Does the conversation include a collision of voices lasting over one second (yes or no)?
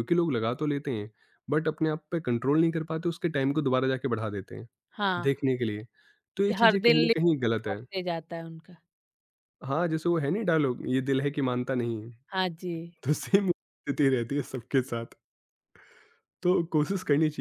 yes